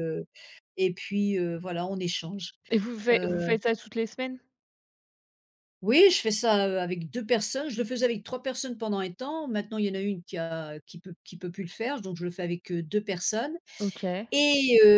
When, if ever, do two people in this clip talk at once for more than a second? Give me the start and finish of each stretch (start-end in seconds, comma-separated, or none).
none